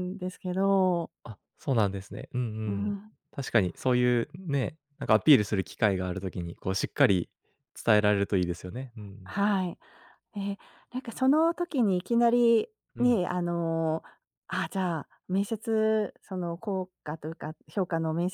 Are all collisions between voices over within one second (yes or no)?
yes